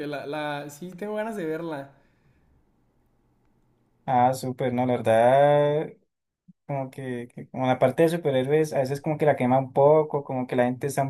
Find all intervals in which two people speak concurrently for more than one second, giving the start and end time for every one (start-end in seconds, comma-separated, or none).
none